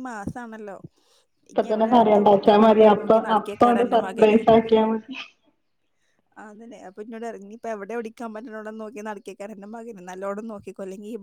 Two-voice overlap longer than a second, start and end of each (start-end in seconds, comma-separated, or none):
1.5-3.8